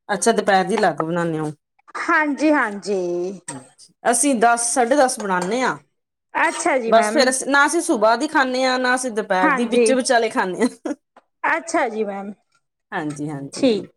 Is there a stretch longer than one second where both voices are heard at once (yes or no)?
no